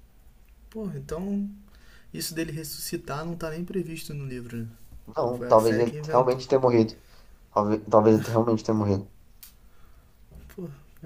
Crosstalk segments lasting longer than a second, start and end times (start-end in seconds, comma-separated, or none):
5.2-6.5